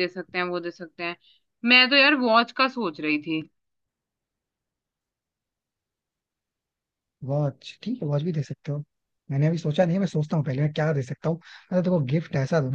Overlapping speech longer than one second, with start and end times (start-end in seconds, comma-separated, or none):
none